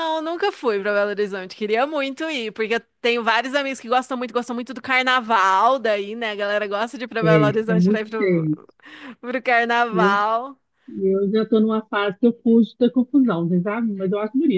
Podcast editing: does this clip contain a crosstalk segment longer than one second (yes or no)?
yes